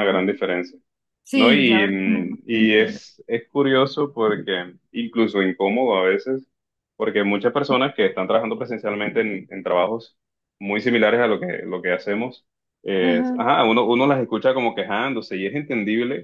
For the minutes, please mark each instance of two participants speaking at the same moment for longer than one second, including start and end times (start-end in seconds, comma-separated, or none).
1.3-3.0